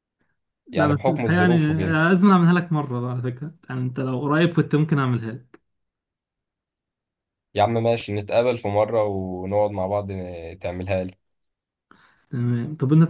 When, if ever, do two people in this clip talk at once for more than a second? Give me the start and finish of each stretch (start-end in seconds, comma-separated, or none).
0.7-2.0